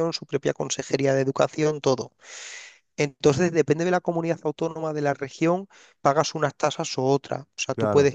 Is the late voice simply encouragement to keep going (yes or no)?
yes